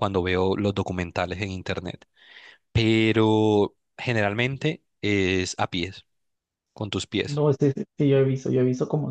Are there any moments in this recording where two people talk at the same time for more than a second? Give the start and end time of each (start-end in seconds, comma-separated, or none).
none